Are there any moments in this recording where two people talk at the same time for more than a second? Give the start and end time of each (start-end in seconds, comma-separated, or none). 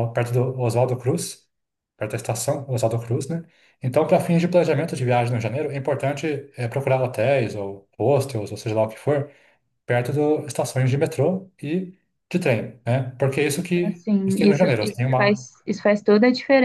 13.8-15.5